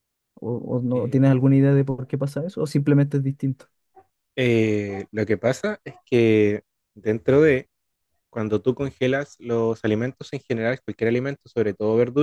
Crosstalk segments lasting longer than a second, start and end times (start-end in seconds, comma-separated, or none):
none